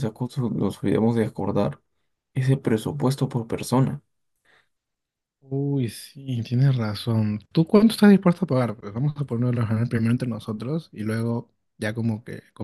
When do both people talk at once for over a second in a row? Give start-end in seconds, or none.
none